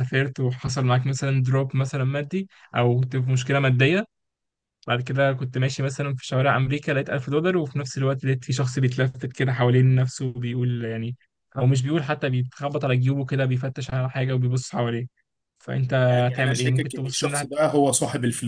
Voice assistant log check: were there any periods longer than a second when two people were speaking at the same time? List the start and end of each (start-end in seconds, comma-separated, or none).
16.0-17.7